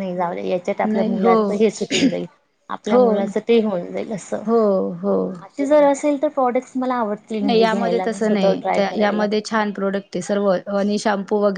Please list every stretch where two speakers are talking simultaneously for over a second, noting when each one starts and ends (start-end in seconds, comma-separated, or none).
none